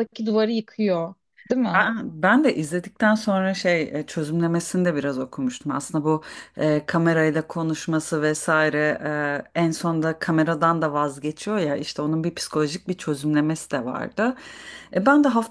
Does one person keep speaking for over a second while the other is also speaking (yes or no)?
no